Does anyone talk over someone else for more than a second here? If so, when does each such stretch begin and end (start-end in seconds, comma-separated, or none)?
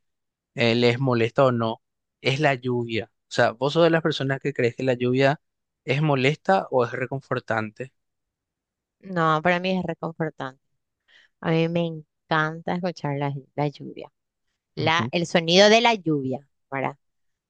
none